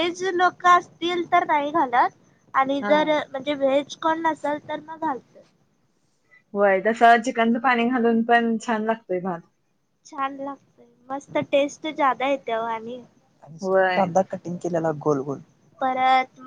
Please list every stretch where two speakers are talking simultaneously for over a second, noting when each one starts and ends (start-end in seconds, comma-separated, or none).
none